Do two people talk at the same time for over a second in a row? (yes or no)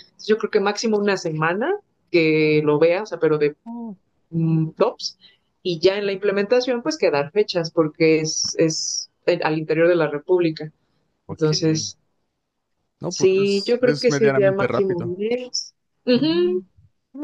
yes